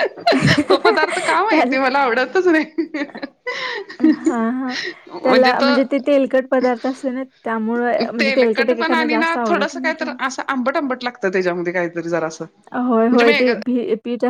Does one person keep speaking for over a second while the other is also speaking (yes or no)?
yes